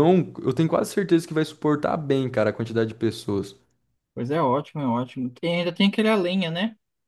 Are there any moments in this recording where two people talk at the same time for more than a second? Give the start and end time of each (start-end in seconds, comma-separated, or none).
none